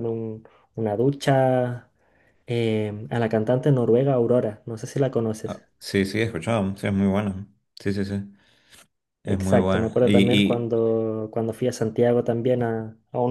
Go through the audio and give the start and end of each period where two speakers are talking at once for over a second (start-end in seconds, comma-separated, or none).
9.2-10.7